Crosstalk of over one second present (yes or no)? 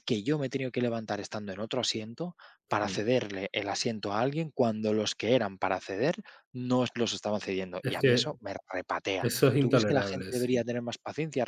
yes